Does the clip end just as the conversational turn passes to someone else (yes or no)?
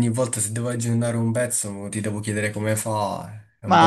yes